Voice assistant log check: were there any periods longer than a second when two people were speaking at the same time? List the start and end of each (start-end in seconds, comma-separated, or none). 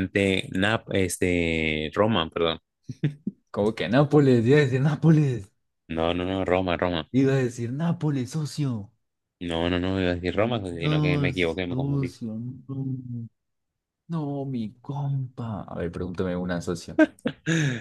10.8-12.1